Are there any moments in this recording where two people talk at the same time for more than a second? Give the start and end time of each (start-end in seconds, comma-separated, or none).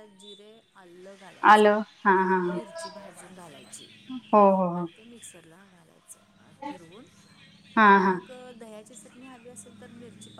none